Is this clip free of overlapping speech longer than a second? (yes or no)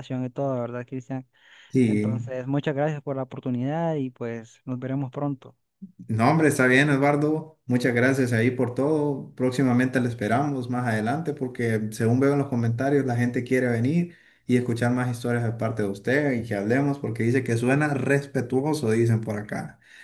yes